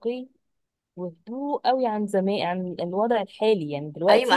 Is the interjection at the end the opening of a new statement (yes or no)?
yes